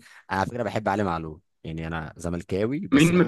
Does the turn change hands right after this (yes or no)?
yes